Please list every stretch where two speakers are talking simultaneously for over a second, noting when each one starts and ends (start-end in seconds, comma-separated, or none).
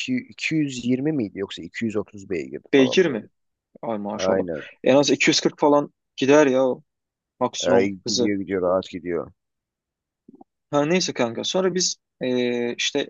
none